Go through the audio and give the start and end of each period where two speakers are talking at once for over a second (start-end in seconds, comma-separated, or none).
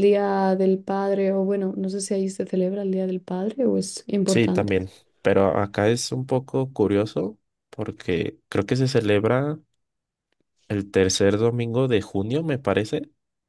none